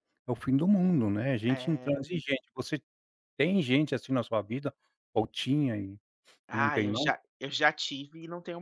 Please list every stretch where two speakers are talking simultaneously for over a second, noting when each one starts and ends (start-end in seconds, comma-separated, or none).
none